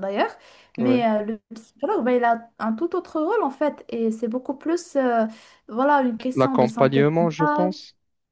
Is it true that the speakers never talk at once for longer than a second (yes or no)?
no